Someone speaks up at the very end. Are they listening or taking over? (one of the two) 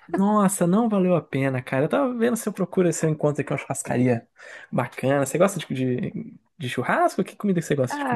taking over